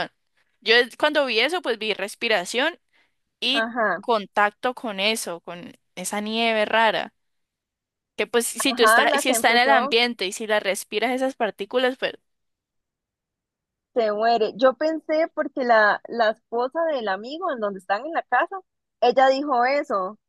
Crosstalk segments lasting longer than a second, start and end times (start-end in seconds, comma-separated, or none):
8.7-9.9